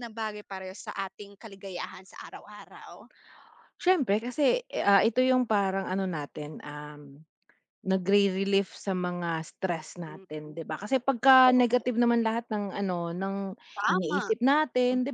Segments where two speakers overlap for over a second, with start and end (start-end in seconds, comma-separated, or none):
none